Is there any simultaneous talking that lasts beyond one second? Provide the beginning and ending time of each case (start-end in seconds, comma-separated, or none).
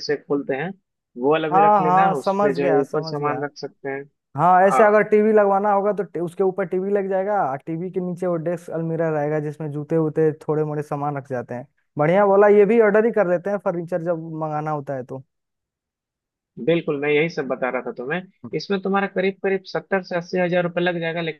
1.5-3.4